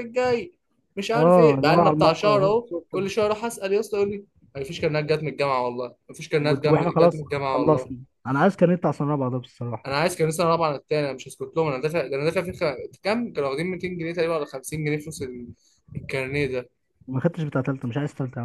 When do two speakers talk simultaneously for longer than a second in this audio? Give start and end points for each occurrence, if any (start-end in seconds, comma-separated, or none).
1.1-2.9, 6.4-7.9